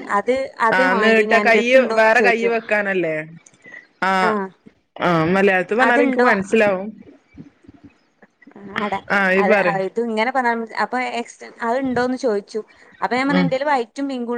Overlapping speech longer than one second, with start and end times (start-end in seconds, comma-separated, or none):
0.8-2.5